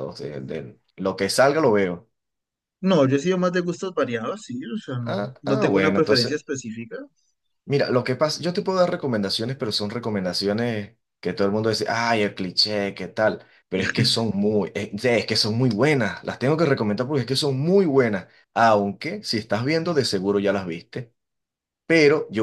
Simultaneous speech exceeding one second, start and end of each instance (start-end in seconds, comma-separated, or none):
5.1-6.4